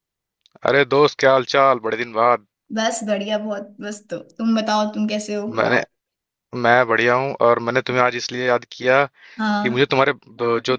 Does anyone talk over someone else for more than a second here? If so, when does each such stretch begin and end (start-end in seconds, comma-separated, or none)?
none